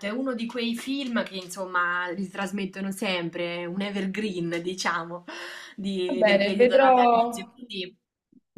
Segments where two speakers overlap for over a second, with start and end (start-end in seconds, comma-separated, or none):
6.1-7.6